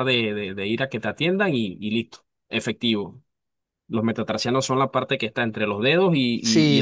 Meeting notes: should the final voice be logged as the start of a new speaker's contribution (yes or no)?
yes